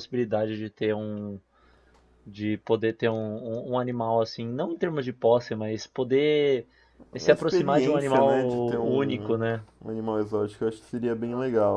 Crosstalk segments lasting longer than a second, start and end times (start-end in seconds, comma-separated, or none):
7.2-9.6